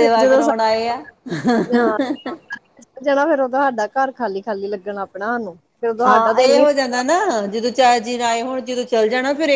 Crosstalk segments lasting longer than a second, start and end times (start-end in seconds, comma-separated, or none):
none